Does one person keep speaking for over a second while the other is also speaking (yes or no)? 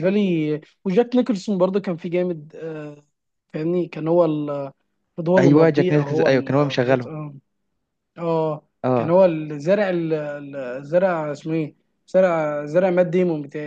yes